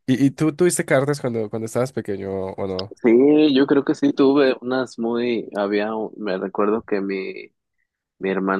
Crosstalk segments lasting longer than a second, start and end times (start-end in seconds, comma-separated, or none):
none